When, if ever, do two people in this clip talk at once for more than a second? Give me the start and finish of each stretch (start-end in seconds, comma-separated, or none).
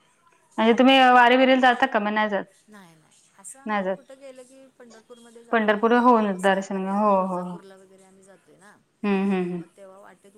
5.5-7.6